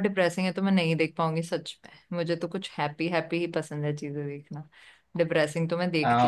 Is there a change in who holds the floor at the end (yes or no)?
yes